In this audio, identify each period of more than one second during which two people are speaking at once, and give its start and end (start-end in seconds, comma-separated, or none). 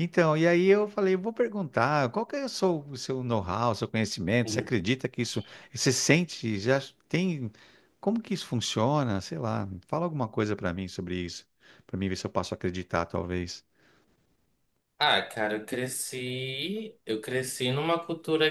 none